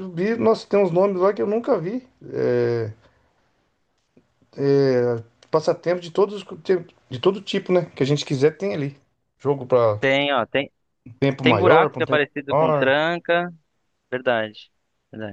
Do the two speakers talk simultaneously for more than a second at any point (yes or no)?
yes